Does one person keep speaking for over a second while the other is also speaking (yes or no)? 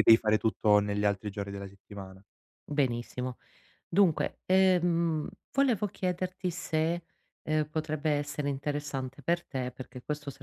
no